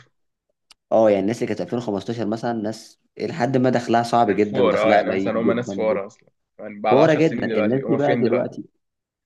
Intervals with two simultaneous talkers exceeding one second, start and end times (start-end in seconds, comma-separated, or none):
4.3-6.0, 6.9-8.6